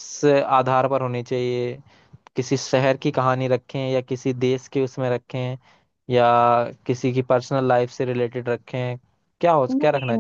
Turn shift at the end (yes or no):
yes